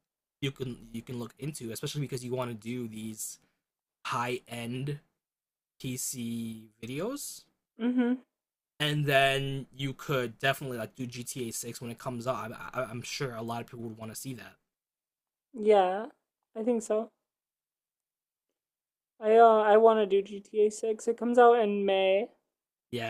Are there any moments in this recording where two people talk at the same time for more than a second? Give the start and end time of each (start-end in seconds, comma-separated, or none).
none